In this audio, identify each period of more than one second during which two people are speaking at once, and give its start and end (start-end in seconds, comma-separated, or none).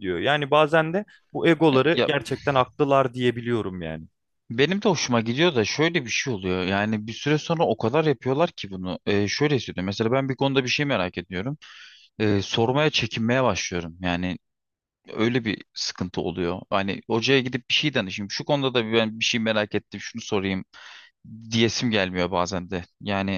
none